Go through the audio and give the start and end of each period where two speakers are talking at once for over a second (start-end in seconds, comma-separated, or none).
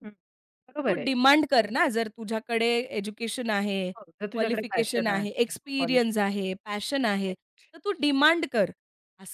4.3-6.2